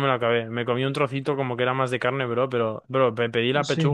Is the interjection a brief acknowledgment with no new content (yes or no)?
yes